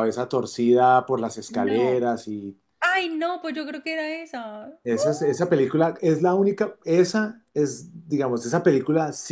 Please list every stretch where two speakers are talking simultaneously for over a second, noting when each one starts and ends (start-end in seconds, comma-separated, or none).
none